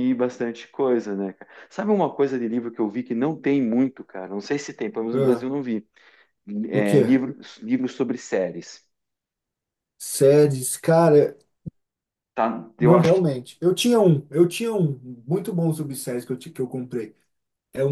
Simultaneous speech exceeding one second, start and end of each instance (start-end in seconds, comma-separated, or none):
none